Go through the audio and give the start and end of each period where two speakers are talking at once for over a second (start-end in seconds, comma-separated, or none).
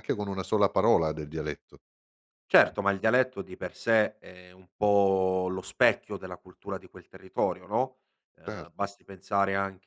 none